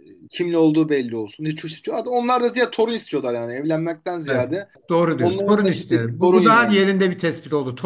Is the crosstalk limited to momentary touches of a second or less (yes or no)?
no